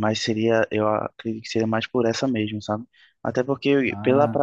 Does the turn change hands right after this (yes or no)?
no